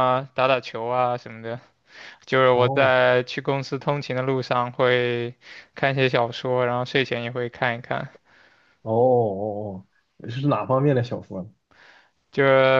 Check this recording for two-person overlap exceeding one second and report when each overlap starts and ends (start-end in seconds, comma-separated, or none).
none